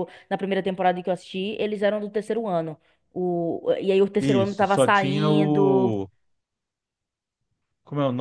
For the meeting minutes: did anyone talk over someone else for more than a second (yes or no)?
yes